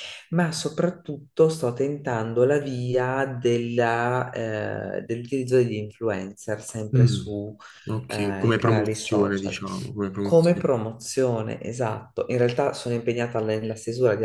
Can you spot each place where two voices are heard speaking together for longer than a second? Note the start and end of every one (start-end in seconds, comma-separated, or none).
8.1-9.6